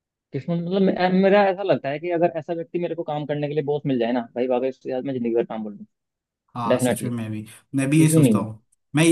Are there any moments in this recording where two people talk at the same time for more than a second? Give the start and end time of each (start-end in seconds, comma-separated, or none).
none